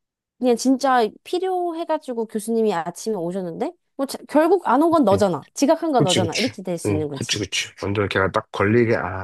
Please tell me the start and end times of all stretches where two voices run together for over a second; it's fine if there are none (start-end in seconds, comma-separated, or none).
6.0-7.5